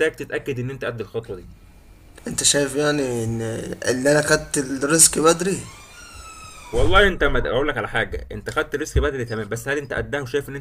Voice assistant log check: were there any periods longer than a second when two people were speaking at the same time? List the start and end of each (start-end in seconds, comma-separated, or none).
none